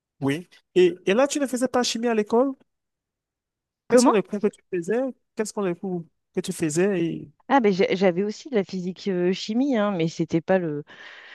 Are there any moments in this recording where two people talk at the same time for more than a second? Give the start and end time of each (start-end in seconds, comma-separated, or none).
none